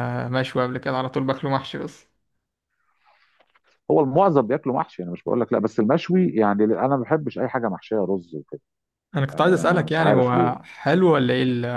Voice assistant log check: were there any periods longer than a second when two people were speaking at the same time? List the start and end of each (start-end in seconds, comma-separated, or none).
9.3-10.5